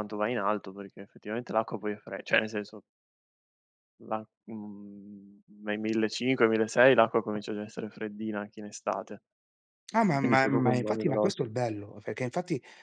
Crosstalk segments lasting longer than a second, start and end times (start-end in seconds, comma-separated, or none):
10.2-11.4